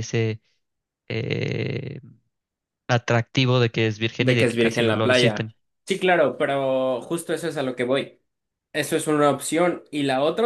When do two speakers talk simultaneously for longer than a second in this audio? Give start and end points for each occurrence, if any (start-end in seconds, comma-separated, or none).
4.2-5.5